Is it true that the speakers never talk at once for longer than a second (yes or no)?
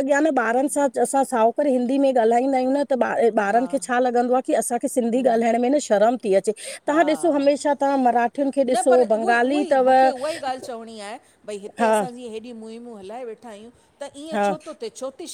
yes